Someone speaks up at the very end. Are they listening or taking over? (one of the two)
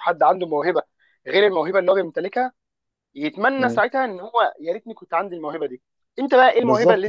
listening